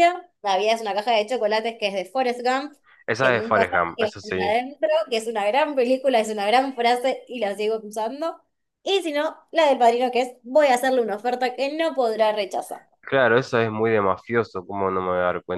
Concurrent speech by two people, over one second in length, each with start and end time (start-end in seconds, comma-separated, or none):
3.2-4.6